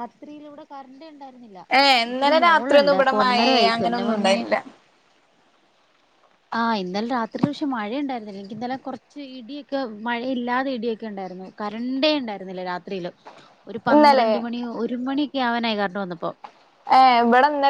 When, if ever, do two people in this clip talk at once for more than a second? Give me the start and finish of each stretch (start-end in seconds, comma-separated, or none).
1.8-4.3